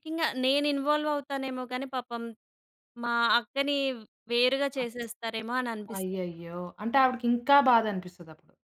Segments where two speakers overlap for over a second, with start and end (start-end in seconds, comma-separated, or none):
none